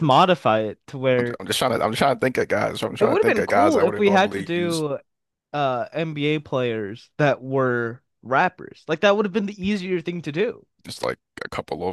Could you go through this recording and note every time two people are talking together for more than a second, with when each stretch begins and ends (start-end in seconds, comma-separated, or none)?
3.0-4.8